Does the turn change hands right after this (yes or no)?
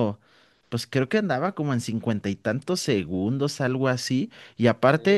no